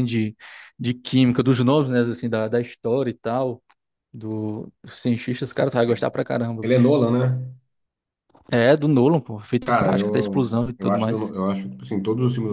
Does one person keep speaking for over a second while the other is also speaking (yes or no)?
yes